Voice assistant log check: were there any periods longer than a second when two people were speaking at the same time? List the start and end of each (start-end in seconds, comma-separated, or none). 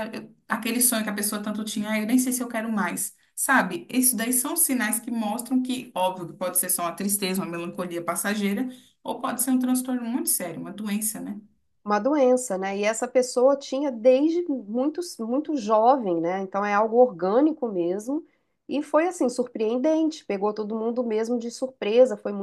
none